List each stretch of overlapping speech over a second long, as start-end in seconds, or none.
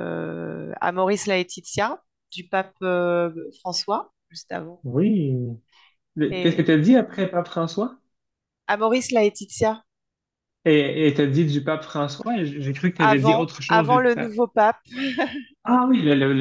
13.0-14.3